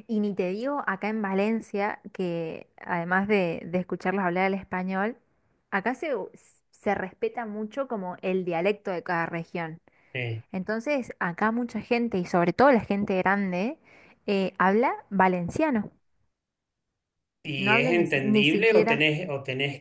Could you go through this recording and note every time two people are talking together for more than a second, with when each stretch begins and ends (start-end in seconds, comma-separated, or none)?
17.6-19.1